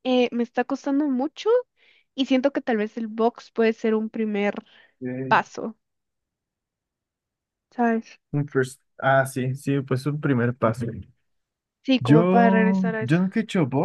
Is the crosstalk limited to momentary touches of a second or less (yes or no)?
no